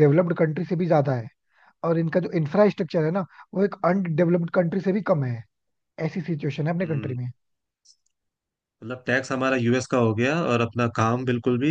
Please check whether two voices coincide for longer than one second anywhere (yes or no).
no